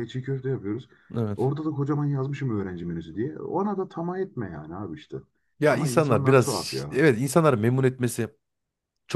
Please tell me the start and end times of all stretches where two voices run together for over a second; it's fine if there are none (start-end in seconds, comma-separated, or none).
5.7-7.0